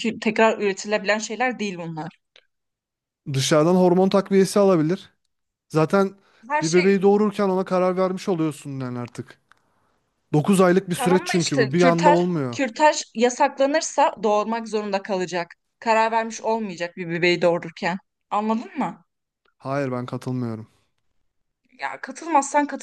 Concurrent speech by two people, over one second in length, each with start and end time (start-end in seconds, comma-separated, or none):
10.9-12.6